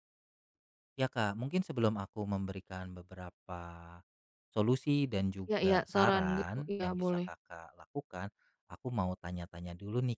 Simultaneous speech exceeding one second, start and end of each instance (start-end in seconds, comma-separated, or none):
5.5-7.3